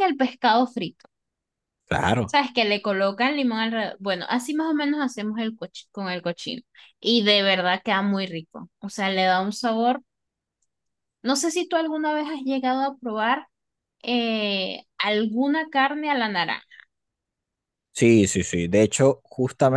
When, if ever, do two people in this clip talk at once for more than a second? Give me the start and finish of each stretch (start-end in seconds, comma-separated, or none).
none